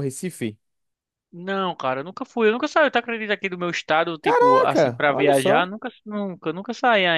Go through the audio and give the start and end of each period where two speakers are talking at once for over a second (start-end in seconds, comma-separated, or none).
4.2-5.7